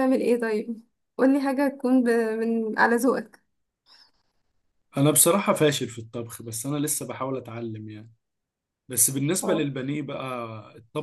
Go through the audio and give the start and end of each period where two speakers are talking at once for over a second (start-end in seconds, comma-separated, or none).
none